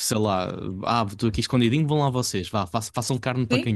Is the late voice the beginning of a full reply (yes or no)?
yes